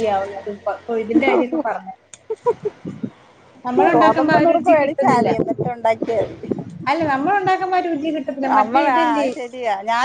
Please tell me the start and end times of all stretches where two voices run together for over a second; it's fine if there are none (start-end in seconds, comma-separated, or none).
4.0-5.3